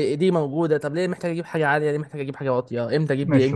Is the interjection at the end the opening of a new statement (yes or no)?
yes